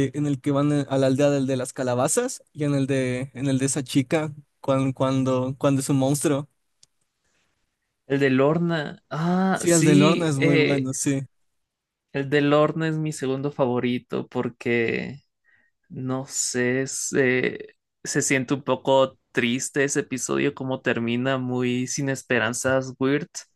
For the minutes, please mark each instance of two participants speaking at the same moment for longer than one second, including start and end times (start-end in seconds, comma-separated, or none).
9.5-10.9